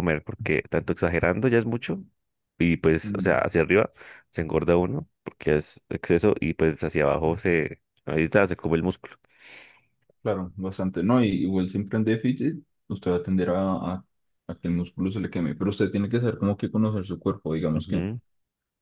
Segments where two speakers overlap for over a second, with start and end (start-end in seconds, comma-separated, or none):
none